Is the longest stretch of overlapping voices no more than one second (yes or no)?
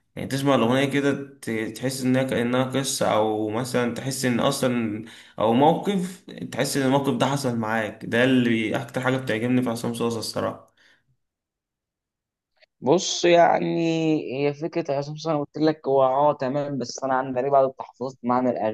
yes